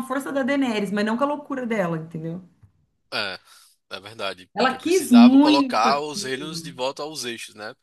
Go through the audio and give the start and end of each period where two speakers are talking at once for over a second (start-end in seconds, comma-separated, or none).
4.5-6.8